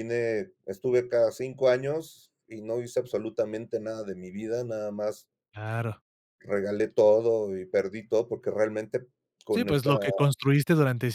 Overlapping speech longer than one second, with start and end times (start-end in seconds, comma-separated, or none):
none